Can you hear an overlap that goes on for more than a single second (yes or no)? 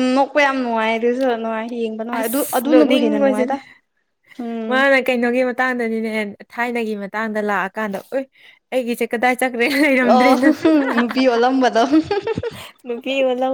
yes